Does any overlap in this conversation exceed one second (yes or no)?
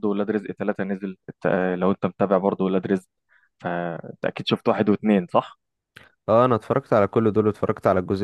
no